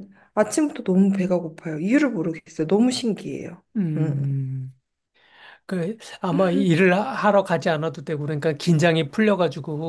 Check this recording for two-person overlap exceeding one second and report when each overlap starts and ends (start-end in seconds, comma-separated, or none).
none